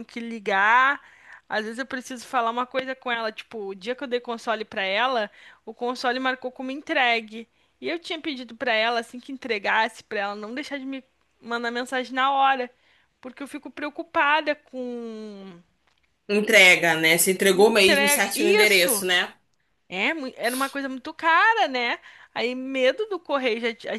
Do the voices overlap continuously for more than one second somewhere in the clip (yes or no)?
yes